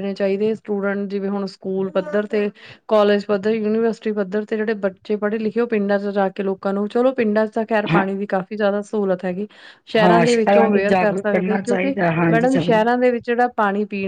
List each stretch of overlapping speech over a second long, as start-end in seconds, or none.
10.9-12.8